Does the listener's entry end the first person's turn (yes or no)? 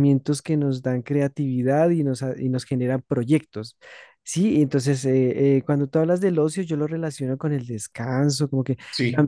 no